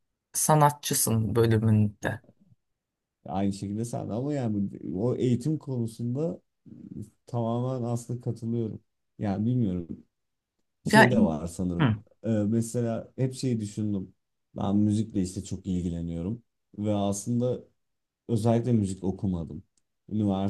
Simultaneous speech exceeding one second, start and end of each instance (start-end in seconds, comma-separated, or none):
none